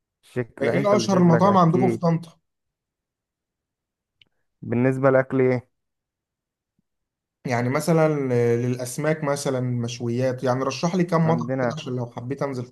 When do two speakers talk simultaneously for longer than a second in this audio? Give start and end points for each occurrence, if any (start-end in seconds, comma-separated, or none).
0.6-2.1